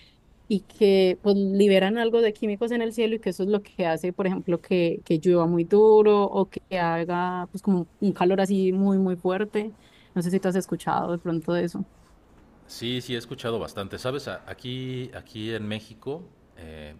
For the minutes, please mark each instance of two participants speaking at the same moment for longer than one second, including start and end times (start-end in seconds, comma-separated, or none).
none